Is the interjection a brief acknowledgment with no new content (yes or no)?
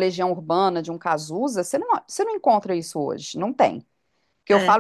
yes